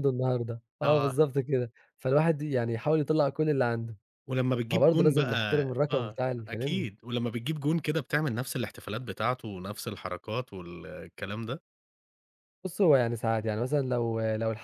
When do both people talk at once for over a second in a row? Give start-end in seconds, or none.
4.7-6.8